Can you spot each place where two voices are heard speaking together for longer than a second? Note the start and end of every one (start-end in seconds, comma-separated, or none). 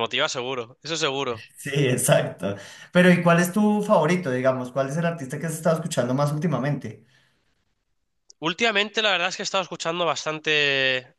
none